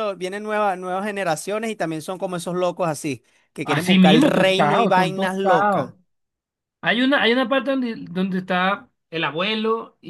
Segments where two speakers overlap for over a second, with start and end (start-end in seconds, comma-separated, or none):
3.6-5.9